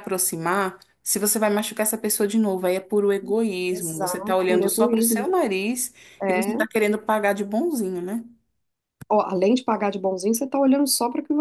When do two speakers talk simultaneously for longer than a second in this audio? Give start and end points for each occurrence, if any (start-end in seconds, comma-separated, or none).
3.7-5.3